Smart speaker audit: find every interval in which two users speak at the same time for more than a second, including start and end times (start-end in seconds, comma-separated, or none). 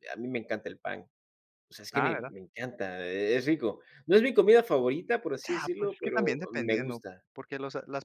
5.5-7.2